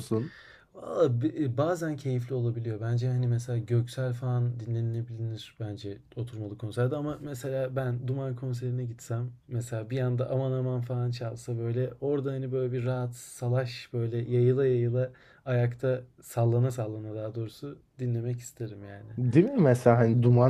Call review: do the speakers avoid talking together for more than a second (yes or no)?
yes